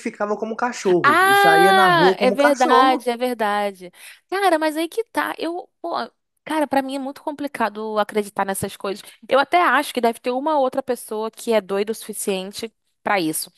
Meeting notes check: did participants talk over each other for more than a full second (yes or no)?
yes